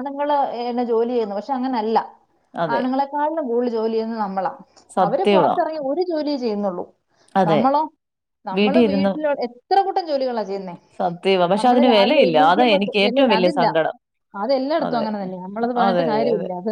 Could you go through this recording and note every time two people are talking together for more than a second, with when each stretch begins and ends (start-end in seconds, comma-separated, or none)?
11.6-13.6